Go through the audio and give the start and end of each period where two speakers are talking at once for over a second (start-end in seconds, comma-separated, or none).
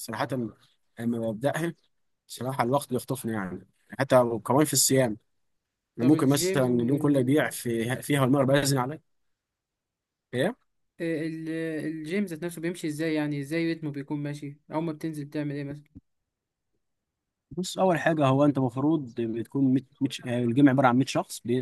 6.0-7.6